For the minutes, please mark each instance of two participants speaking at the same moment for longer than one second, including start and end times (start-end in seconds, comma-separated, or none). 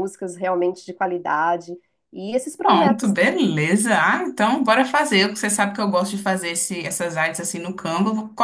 none